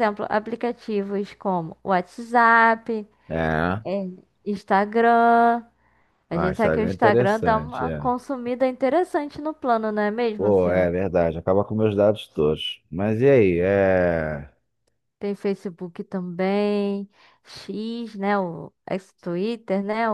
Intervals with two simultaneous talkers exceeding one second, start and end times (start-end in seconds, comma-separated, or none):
6.3-8.1